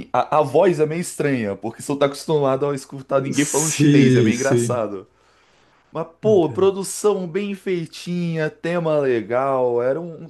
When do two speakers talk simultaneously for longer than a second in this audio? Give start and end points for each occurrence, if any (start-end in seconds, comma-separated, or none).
3.3-4.8